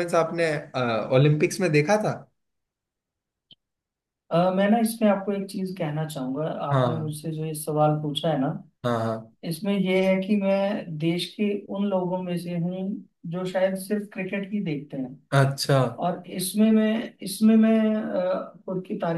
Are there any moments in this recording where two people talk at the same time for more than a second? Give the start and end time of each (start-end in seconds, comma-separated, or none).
none